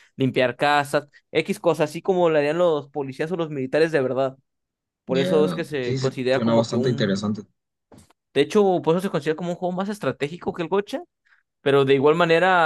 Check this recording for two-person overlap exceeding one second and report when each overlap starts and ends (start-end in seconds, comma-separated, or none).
5.1-7.3